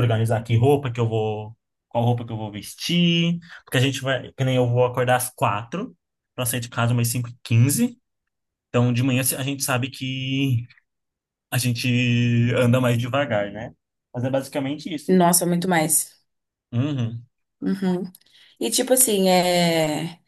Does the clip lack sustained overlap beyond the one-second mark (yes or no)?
yes